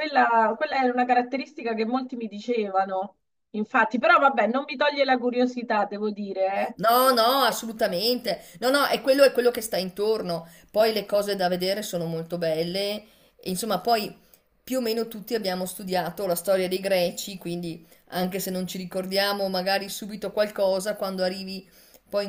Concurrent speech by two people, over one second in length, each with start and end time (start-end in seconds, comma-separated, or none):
none